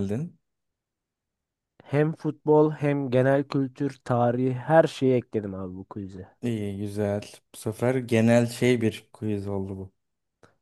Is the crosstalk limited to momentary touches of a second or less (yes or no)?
yes